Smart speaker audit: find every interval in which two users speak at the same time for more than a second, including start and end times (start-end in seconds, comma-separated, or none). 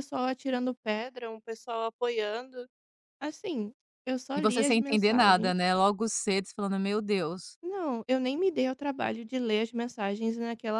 4.4-5.6